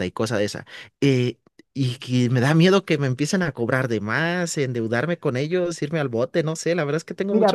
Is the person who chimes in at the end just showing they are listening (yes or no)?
no